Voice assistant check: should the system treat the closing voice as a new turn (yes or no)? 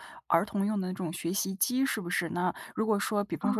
no